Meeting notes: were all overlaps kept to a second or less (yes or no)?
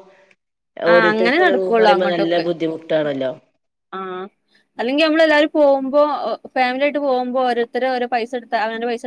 no